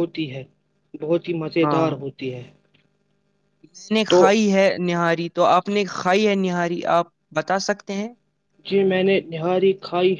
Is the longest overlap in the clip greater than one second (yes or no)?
no